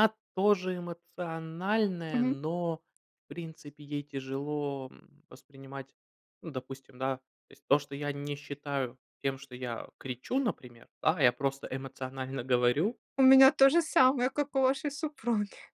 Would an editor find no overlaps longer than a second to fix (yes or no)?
yes